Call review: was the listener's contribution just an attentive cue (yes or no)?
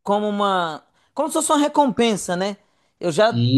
yes